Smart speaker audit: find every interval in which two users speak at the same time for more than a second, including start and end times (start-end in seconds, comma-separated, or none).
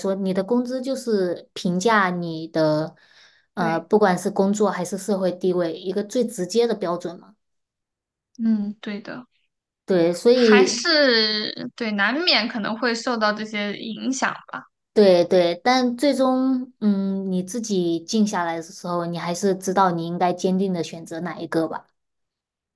none